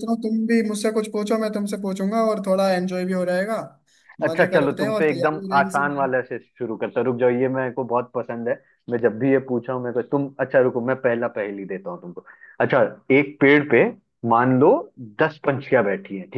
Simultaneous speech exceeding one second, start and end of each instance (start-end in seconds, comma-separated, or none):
4.3-6.1